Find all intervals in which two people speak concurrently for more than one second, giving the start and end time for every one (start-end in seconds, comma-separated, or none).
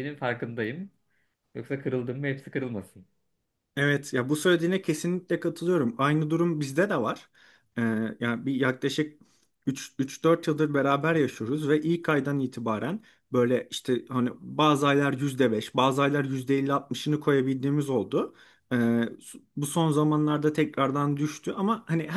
none